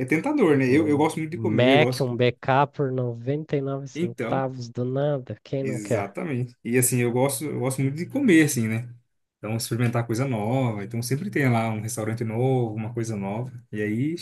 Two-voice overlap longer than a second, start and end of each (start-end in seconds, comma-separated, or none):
0.7-2.2